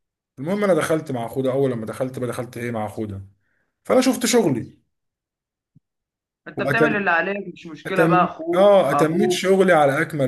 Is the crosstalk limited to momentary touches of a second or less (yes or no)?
no